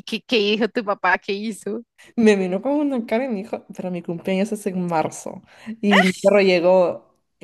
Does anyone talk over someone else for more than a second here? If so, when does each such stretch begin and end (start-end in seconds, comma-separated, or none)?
none